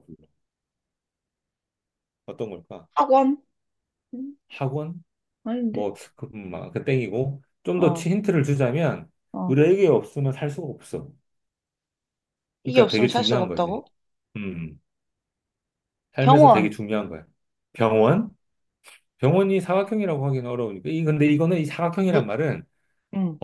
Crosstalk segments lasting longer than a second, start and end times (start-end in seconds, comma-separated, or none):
12.6-13.8